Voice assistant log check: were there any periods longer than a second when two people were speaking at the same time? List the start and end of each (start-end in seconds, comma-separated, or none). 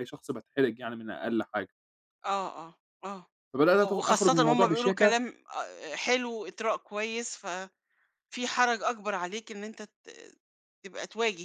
3.9-5.2